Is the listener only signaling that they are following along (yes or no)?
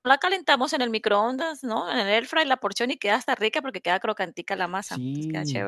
no